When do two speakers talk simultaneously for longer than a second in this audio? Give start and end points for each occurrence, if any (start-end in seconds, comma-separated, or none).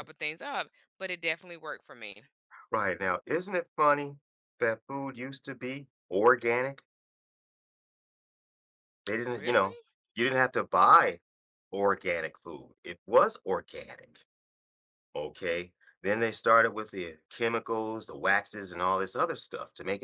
none